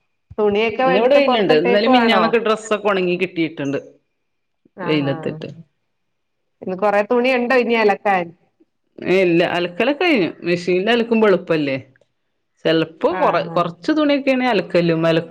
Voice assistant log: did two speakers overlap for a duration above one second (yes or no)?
yes